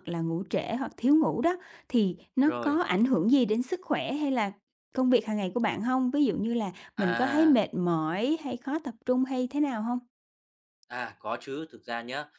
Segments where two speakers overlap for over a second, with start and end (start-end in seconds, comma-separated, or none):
none